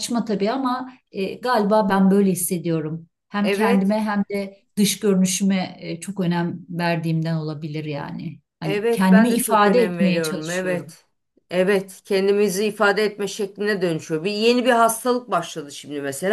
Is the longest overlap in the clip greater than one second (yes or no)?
yes